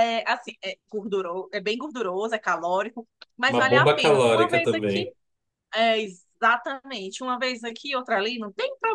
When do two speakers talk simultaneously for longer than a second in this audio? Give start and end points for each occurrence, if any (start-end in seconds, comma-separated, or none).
3.5-5.0